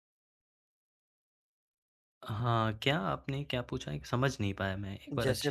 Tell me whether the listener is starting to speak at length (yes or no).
yes